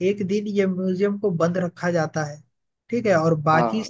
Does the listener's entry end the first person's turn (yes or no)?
no